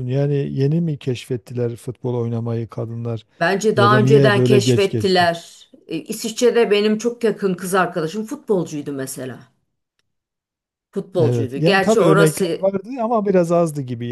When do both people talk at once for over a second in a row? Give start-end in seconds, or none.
3.7-5.3, 11.2-12.7